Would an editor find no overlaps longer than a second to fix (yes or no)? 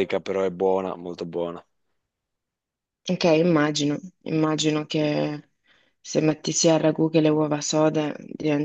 yes